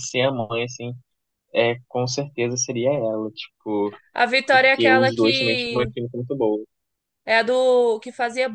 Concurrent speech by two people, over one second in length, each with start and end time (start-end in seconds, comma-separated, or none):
4.5-5.9